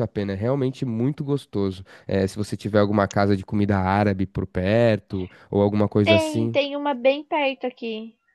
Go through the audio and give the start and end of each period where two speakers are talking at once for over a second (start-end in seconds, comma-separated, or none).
none